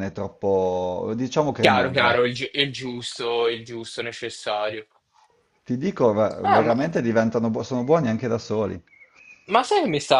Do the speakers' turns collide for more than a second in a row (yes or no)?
no